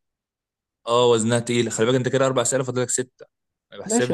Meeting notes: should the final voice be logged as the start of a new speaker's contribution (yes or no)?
yes